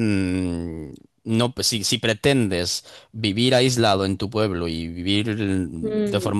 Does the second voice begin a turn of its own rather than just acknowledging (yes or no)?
no